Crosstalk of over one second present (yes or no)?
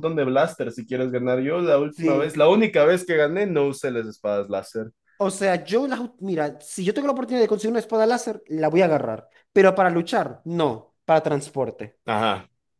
no